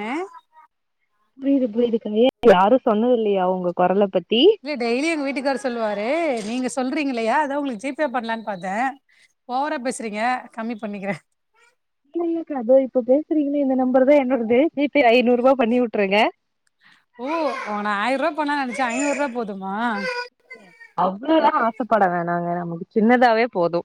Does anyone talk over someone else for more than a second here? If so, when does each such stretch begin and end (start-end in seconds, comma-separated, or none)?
none